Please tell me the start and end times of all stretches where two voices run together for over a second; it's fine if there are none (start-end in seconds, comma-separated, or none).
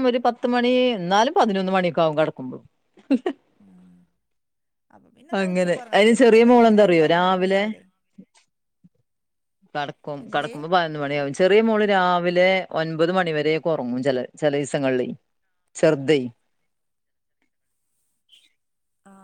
5.4-7.6